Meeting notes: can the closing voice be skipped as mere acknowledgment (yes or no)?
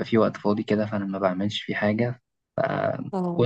yes